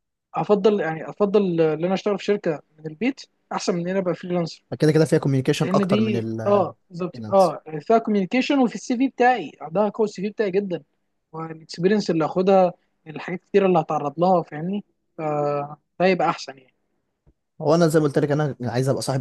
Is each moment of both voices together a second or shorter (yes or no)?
no